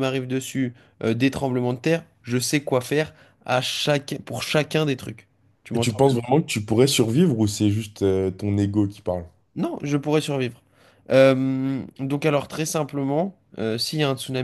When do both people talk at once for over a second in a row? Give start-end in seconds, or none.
none